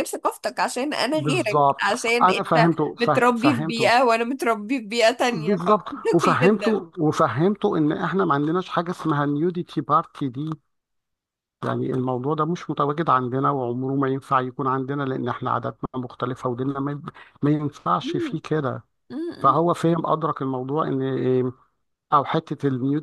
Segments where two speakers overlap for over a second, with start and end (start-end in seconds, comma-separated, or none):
1.1-3.9, 5.3-6.7